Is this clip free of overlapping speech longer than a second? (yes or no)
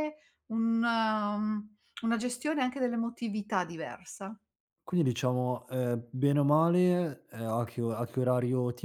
yes